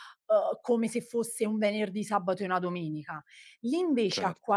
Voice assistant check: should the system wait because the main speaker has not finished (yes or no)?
yes